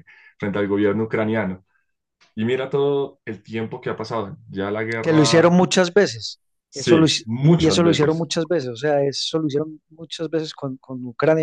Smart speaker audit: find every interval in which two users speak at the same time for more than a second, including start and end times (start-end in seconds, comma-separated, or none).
6.7-8.3